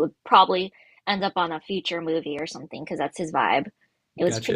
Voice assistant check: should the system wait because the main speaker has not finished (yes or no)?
no